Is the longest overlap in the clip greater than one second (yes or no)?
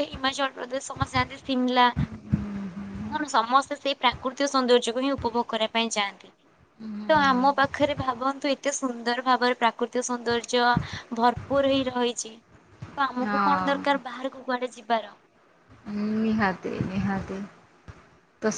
no